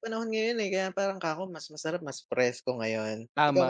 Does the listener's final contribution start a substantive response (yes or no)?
yes